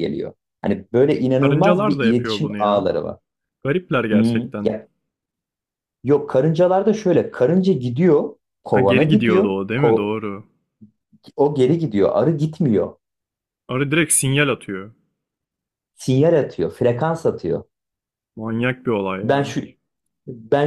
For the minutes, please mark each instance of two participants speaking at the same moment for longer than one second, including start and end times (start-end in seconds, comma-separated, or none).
1.4-2.9, 8.7-10.1